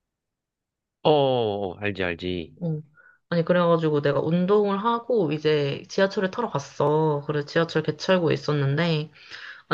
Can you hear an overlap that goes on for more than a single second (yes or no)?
no